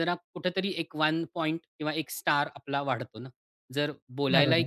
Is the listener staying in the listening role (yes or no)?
yes